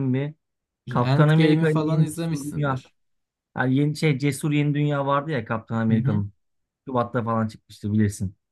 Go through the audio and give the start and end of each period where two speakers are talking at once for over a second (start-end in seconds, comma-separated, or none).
0.9-2.8